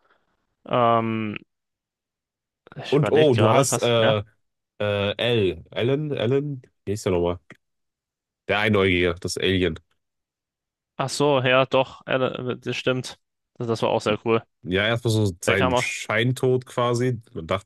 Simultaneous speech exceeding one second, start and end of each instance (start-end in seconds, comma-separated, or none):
2.9-4.2